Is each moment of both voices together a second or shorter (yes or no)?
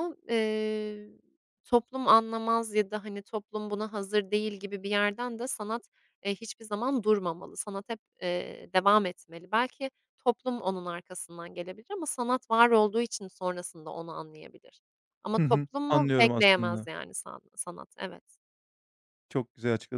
no